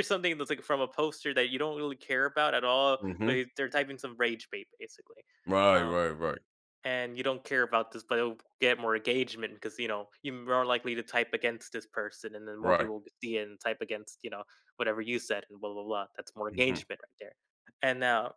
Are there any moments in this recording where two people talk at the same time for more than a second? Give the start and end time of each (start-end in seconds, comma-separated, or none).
none